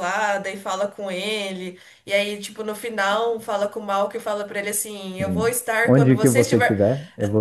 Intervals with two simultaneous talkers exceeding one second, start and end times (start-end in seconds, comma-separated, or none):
5.2-6.8